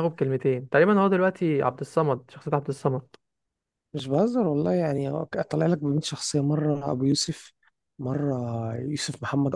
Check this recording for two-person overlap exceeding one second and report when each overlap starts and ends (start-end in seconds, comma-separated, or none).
none